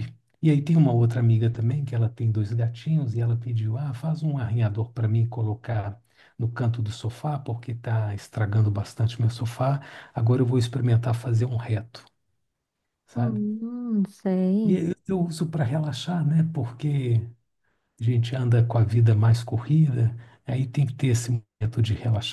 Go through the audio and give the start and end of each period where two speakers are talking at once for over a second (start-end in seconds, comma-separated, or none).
none